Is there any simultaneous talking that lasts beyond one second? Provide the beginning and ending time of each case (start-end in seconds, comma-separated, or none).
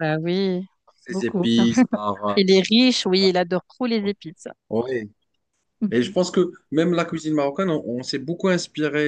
none